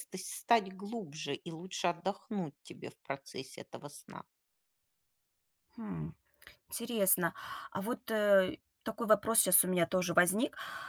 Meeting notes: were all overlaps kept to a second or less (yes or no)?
yes